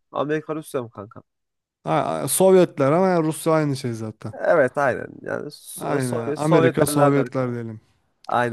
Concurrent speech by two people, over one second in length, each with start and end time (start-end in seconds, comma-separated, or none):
5.8-7.5